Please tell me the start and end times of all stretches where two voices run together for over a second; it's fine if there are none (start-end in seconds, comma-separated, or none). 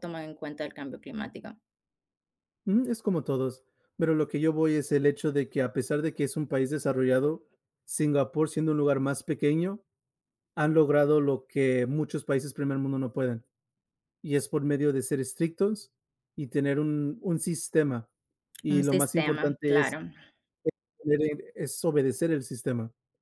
18.7-20.0